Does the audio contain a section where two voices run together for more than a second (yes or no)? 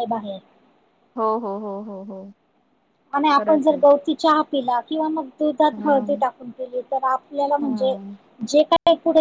no